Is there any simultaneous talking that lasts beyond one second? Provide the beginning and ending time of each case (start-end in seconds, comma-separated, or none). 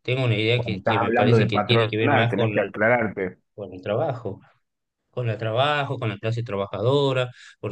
0.5-2.7